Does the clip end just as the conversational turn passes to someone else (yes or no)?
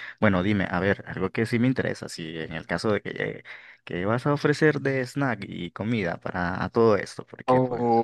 yes